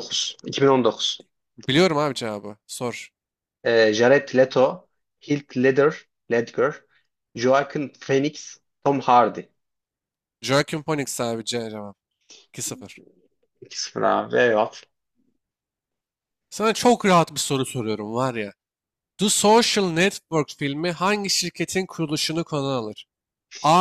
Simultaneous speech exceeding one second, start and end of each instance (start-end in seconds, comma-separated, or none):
none